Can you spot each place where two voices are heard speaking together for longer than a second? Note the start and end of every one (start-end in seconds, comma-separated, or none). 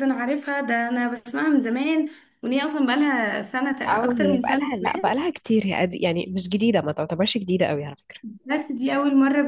3.9-5.2